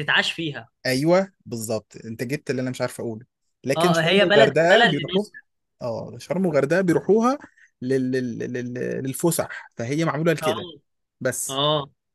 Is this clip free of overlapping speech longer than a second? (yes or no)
no